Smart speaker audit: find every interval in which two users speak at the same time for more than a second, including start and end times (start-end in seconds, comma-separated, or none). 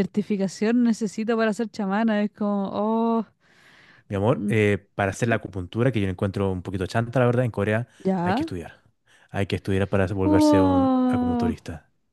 10.2-11.5